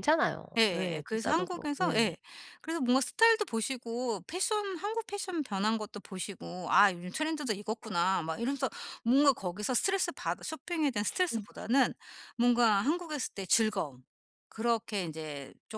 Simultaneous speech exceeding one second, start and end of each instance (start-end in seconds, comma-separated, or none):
0.6-2.2